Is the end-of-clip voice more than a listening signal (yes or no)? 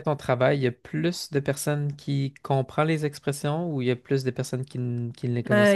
yes